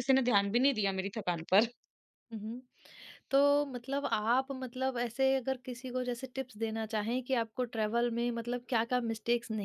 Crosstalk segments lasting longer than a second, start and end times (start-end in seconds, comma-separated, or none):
none